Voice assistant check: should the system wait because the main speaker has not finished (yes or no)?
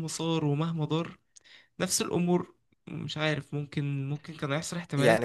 no